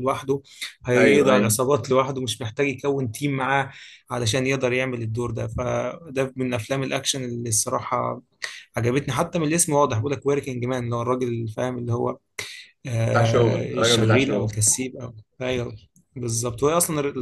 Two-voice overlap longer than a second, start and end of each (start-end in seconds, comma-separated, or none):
13.1-14.5